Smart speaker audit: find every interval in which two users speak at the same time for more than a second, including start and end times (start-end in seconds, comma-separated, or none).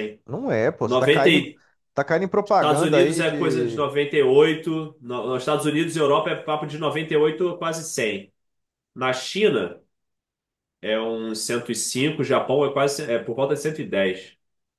2.4-3.9